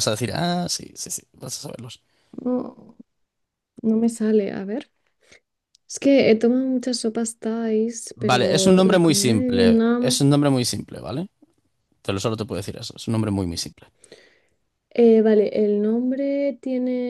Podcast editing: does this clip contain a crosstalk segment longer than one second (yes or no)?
yes